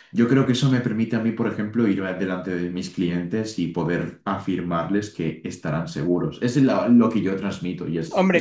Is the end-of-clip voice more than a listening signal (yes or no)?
yes